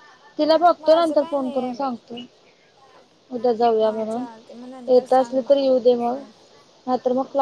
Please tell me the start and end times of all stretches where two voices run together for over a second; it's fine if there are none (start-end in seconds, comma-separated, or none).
0.8-2.1, 4.9-6.2